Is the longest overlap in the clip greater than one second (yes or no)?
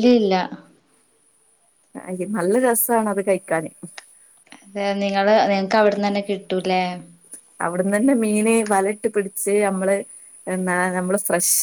no